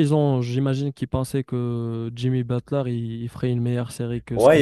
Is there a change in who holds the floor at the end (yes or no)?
yes